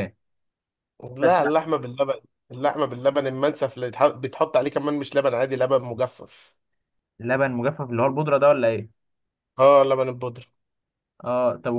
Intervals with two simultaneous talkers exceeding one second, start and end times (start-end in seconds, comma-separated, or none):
none